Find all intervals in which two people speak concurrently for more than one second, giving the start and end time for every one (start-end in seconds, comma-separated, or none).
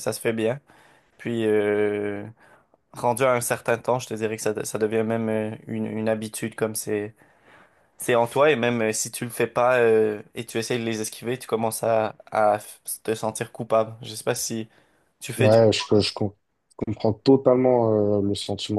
none